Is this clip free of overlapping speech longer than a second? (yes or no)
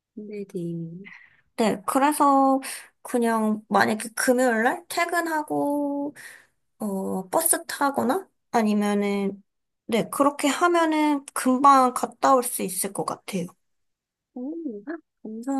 yes